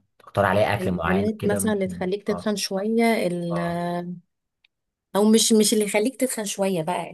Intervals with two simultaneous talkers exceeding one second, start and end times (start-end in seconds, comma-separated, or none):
0.8-2.5